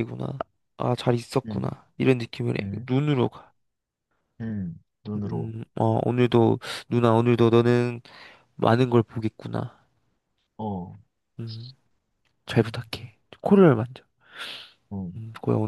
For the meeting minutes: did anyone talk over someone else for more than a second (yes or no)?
no